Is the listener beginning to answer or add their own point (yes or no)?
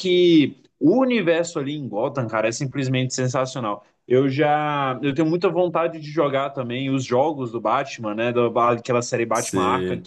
no